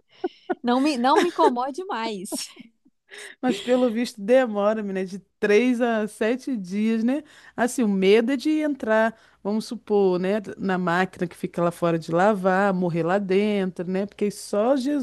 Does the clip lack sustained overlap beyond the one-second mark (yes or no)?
yes